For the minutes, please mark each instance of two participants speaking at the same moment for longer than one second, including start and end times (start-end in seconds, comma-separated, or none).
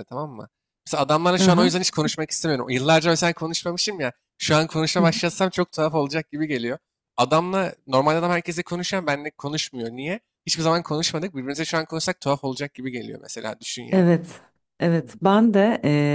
none